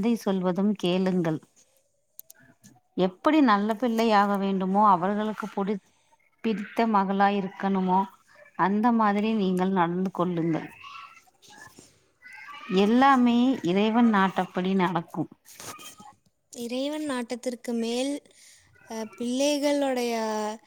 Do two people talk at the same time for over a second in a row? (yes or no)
no